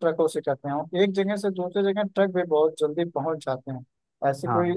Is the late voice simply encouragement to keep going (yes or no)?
yes